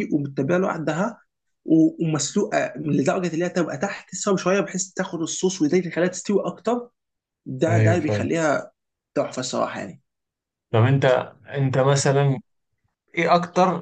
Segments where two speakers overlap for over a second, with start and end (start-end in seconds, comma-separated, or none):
none